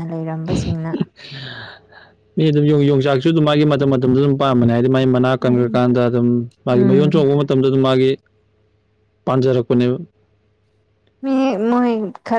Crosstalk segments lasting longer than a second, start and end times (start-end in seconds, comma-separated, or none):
none